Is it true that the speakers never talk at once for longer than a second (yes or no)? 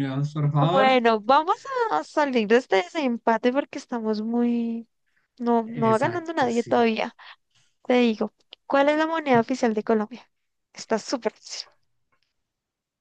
no